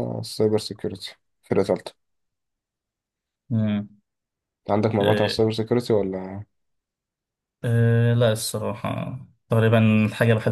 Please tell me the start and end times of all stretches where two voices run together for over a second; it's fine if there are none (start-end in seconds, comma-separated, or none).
none